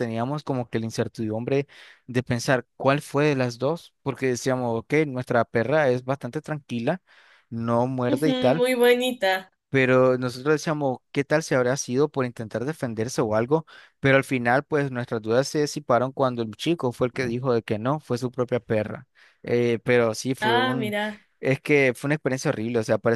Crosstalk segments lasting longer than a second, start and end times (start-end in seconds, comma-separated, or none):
none